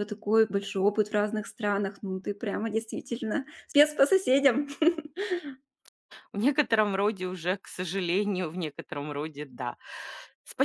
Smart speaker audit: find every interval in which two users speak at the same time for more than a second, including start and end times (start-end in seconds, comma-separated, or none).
none